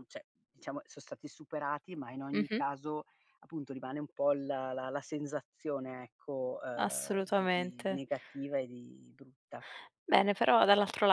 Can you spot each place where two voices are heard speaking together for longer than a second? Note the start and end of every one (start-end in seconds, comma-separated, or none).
6.8-8.0